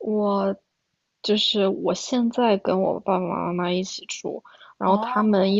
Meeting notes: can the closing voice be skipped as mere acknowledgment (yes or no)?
yes